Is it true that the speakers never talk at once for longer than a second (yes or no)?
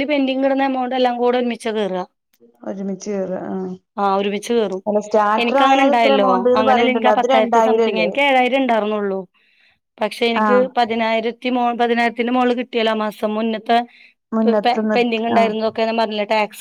no